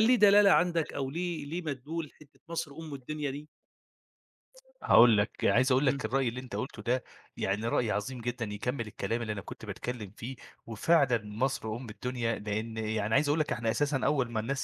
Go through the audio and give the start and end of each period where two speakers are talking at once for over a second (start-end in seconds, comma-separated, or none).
none